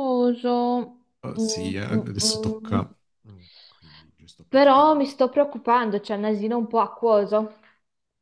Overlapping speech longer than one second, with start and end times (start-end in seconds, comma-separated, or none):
1.4-2.8